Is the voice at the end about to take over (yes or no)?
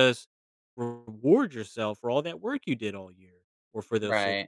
no